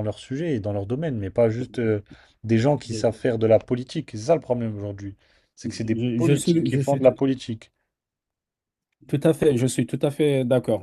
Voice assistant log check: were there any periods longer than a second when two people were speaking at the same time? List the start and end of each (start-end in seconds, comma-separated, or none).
5.6-7.1